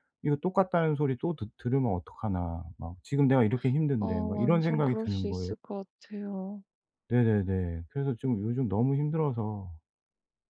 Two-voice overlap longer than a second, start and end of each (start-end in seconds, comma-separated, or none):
4.0-5.5